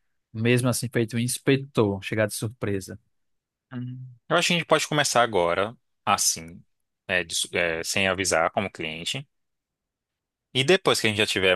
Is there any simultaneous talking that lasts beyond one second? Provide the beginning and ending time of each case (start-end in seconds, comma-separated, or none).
none